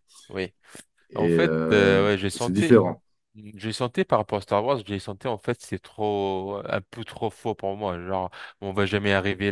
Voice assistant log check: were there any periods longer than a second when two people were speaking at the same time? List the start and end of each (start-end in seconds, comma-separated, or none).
1.1-2.8